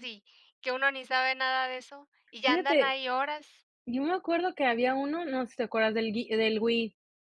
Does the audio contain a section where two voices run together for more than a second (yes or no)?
no